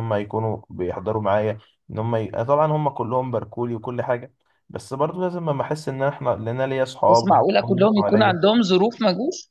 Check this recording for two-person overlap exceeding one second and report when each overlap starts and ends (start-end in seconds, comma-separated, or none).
7.1-8.4